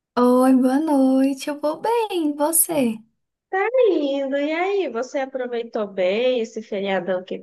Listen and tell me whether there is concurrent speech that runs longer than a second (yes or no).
no